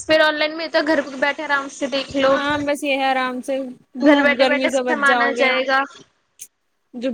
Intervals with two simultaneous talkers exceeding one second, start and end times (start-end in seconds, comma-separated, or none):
4.0-5.5